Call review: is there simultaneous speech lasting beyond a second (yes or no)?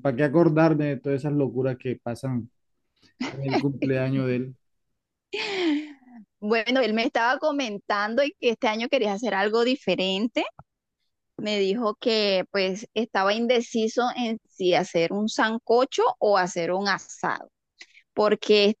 no